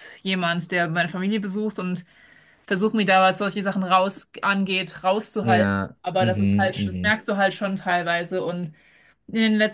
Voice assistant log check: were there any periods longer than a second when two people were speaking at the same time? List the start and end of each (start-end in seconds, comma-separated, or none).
5.4-7.1